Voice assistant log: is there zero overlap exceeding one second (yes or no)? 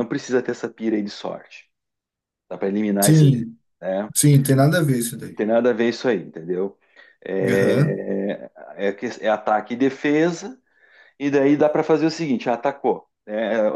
yes